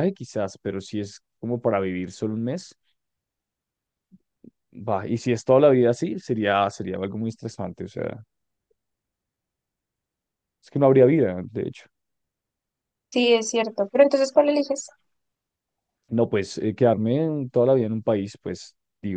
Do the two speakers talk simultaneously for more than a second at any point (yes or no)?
no